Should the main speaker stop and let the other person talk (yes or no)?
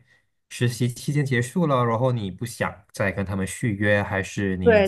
yes